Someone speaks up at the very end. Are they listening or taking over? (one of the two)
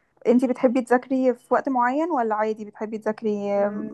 taking over